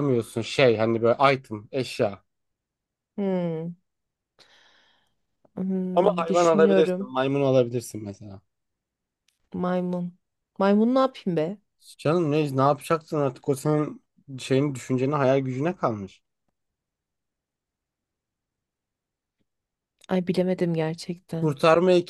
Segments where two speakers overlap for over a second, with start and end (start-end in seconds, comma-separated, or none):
5.9-7.2